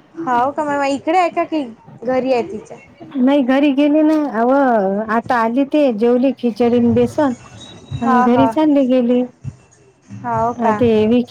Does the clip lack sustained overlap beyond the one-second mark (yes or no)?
yes